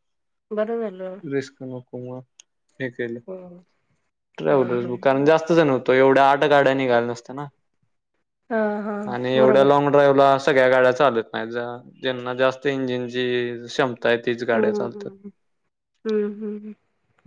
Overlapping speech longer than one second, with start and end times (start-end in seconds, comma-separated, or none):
none